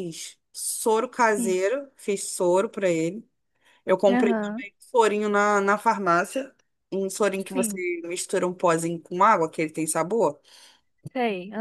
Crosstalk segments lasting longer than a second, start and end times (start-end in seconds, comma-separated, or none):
none